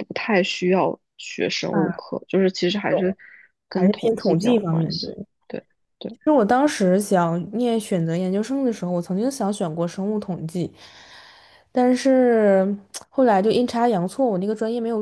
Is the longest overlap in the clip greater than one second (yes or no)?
yes